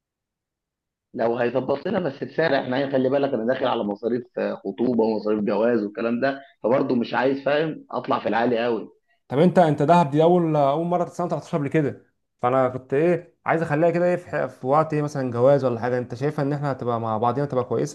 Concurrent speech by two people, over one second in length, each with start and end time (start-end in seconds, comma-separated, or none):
none